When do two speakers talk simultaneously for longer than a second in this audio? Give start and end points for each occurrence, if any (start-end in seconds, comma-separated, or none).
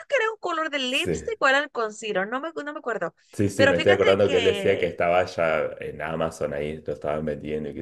3.6-5.0